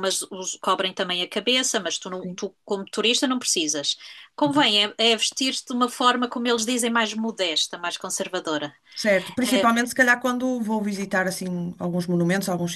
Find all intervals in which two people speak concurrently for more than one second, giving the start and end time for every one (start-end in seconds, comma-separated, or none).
none